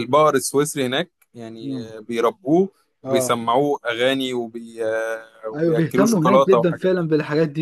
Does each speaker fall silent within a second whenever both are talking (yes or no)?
no